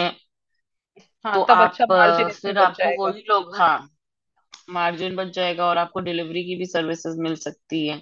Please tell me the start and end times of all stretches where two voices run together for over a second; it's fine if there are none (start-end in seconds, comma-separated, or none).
1.3-3.2